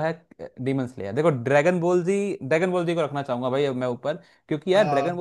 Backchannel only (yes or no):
yes